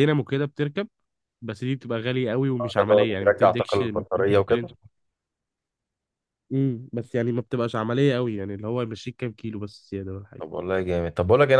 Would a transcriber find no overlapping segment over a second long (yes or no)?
no